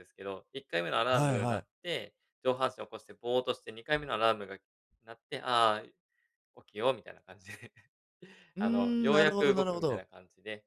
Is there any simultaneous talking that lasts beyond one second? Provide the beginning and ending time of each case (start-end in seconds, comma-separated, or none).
8.6-10.0